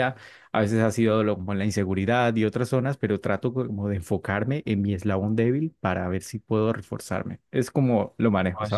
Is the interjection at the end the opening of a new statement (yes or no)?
yes